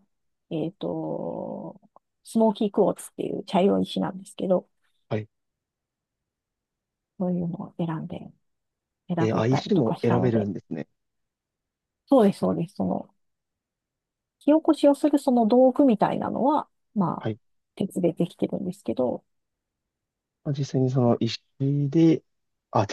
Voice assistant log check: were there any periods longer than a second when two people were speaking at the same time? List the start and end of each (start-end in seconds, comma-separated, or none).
9.2-10.5